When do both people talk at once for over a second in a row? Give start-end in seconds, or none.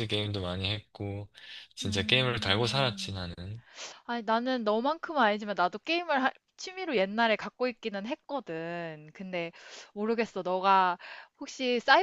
1.8-3.2